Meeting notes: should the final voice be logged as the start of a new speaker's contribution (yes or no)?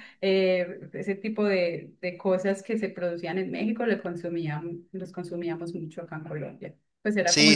yes